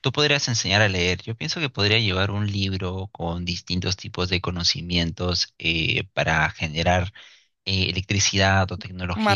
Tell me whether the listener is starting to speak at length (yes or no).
no